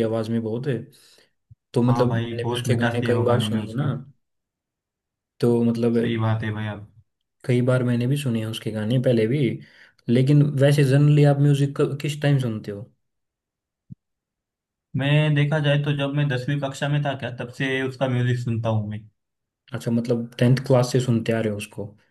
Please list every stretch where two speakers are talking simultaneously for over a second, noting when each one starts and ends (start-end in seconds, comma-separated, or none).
1.9-3.9